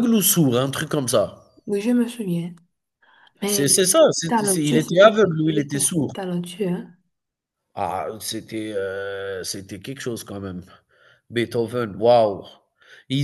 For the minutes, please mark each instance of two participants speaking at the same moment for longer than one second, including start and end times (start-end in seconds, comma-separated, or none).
3.4-6.1